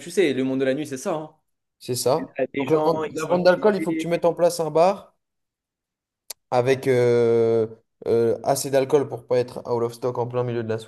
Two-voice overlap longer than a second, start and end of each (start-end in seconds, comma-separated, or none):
2.2-4.1